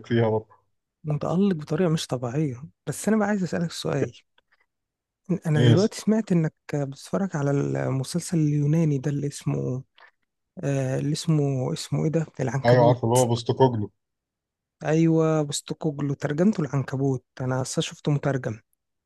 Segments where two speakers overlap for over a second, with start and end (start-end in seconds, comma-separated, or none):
none